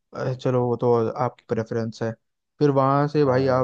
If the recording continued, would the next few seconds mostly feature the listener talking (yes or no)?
no